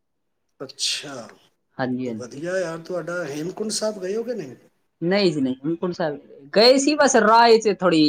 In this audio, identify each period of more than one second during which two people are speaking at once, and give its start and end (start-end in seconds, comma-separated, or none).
none